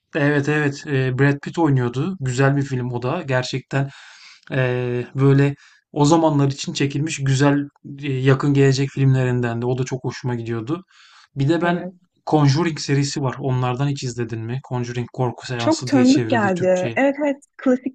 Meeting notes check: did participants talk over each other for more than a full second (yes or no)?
yes